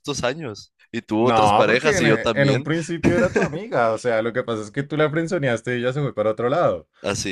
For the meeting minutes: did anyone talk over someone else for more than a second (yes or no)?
yes